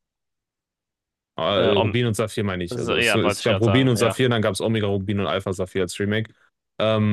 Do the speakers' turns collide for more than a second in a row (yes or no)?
yes